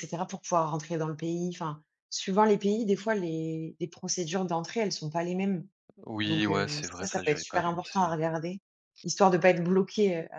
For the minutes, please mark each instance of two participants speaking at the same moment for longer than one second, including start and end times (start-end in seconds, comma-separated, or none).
6.2-8.1